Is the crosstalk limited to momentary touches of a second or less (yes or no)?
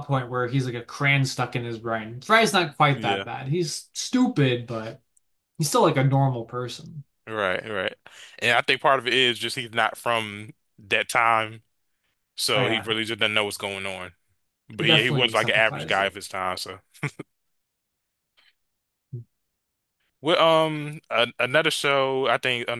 no